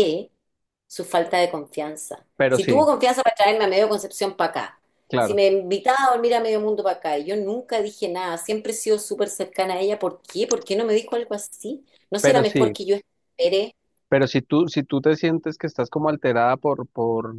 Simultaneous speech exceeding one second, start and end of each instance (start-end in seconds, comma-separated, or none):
none